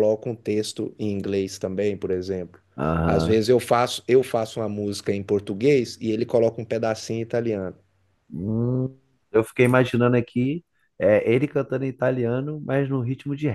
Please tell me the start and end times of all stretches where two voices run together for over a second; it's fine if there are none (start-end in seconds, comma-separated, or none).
none